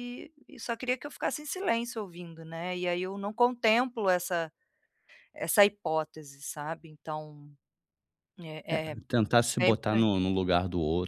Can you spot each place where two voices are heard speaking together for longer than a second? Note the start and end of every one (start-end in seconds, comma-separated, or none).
none